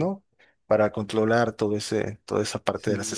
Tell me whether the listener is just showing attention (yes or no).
no